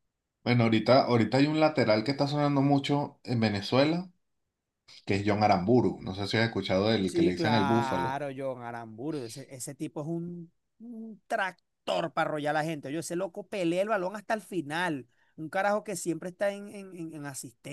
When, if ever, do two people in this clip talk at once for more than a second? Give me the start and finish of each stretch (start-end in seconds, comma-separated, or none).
7.0-8.2